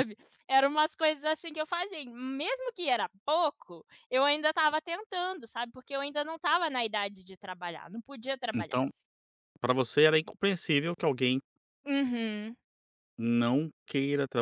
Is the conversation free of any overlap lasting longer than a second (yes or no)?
yes